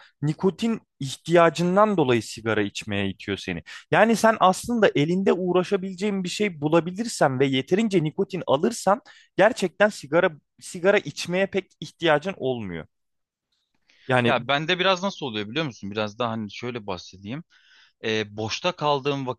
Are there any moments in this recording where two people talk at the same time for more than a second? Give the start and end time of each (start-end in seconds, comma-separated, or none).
none